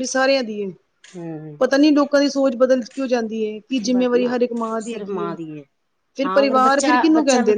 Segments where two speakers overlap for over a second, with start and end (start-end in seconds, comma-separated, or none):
3.9-5.3